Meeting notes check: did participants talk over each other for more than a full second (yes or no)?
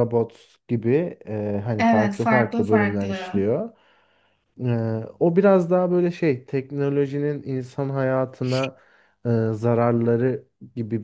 yes